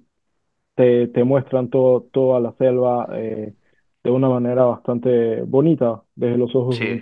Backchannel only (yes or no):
no